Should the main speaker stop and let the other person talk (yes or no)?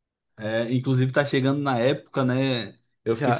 no